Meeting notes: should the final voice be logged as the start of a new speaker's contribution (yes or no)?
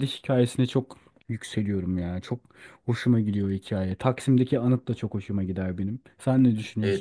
yes